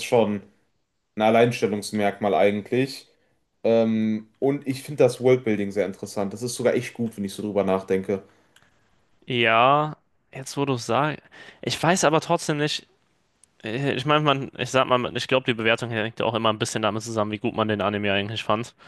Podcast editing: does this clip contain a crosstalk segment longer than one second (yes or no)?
no